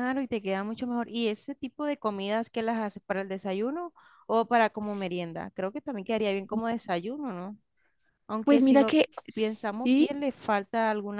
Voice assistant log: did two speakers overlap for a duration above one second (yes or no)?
yes